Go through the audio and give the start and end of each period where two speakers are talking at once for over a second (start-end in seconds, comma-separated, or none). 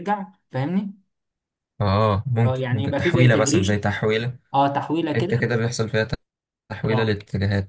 2.4-3.8